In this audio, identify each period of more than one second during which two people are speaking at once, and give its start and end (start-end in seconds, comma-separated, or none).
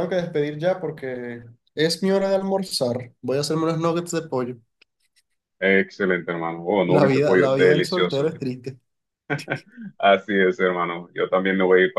6.9-8.3